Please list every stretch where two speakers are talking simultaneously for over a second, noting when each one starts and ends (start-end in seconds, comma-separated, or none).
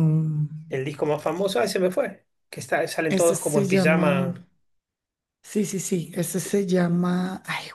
3.1-4.3